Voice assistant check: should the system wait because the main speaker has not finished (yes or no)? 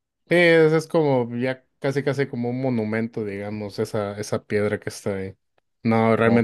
yes